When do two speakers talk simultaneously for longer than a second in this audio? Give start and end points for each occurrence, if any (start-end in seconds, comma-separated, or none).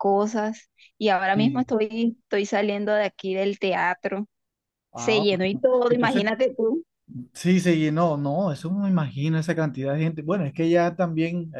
5.0-6.2